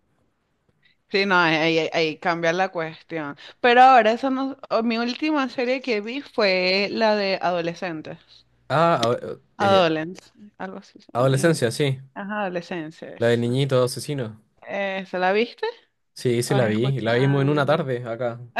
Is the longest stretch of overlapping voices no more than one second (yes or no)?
no